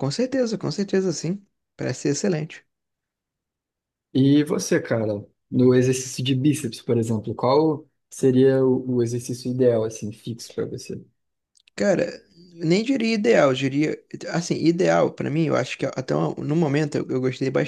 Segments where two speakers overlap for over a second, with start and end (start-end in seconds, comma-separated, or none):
none